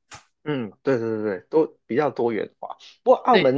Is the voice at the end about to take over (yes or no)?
no